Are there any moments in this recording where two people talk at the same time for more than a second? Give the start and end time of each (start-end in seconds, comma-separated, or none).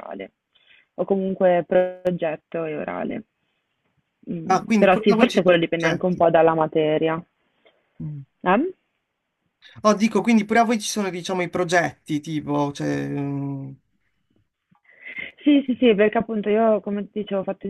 4.5-6.2